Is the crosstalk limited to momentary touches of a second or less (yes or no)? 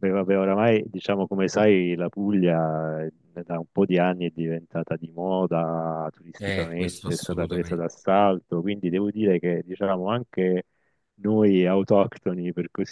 no